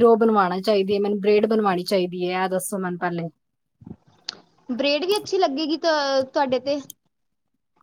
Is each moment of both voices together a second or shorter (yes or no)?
yes